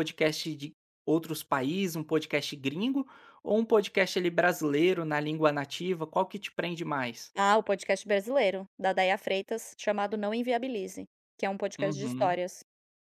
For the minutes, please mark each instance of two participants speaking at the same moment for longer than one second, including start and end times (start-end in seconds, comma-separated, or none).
none